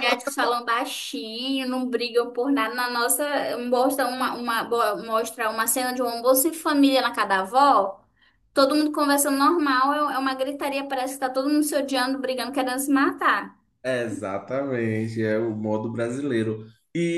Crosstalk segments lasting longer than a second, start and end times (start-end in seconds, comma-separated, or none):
none